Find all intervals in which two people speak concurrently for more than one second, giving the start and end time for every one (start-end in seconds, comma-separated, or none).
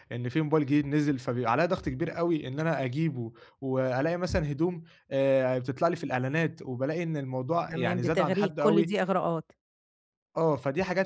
7.7-8.9